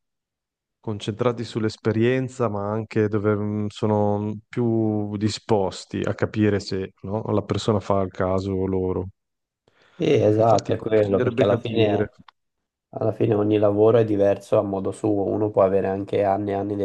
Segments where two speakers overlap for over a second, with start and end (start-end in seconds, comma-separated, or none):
10.3-12.1